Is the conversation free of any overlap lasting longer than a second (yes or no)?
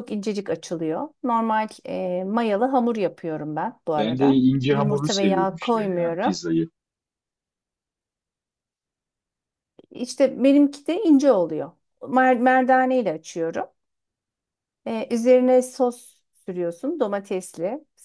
no